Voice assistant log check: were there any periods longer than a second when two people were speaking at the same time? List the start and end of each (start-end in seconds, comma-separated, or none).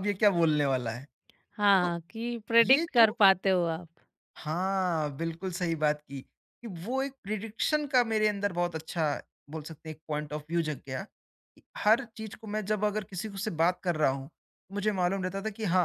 none